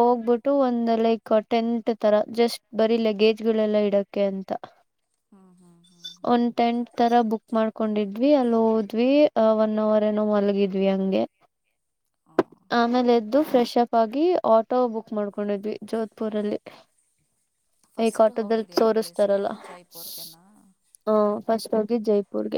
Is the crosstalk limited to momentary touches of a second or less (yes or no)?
no